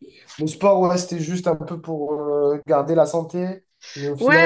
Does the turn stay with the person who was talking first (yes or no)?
no